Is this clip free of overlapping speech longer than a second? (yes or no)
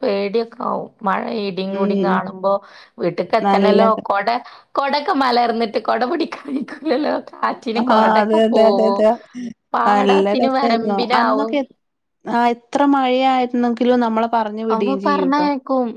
no